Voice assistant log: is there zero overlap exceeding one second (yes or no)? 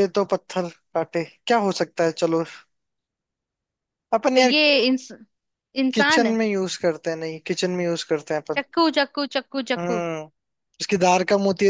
yes